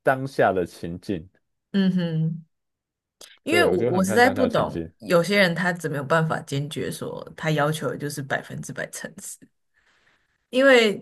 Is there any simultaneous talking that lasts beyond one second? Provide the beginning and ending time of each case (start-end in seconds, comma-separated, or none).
3.5-4.9